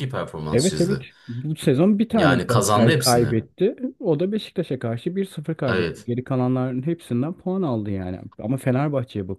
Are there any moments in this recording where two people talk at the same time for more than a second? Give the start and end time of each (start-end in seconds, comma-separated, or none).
2.1-3.4